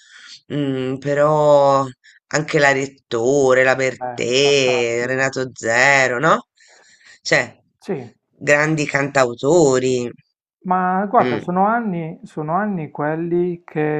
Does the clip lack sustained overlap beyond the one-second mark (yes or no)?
no